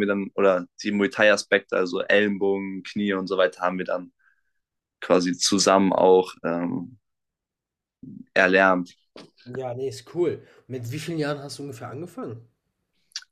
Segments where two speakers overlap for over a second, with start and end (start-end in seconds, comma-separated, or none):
none